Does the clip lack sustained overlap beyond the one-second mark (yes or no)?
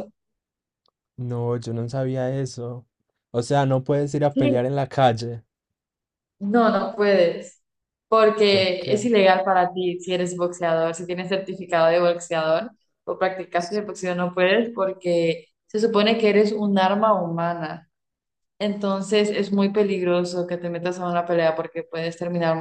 yes